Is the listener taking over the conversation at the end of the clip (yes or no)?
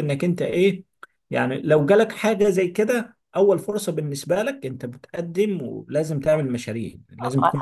yes